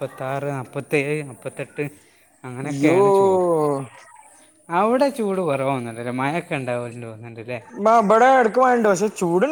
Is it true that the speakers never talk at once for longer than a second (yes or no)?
yes